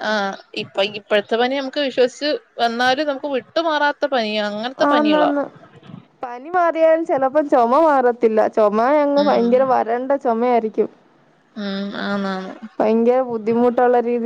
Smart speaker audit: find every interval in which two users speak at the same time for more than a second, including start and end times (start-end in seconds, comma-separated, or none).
none